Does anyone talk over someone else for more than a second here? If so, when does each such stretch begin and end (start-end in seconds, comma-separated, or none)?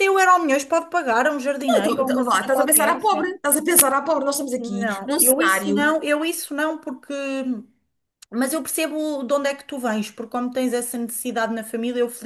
1.7-3.4, 4.6-5.9